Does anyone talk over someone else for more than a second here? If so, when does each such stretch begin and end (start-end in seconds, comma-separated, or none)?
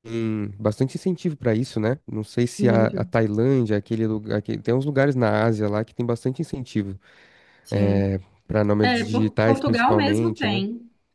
8.8-10.6